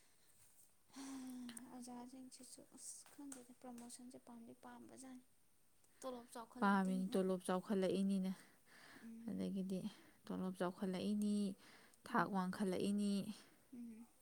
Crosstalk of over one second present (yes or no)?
no